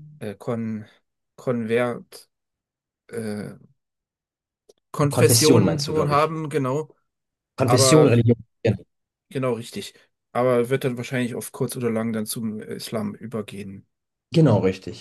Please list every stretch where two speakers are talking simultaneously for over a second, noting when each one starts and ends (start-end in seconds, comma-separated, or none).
5.1-6.3